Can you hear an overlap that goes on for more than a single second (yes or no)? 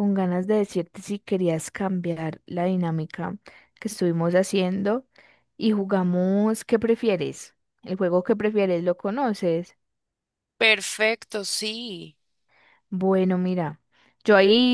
no